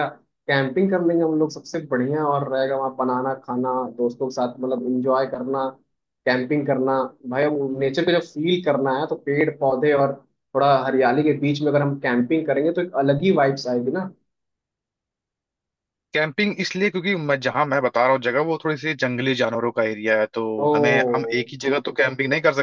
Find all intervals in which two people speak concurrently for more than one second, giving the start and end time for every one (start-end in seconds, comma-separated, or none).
none